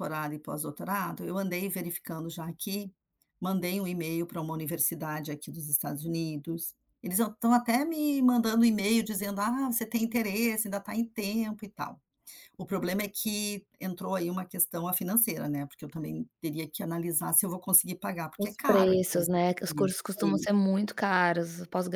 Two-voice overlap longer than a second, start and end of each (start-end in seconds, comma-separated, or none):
18.4-20.5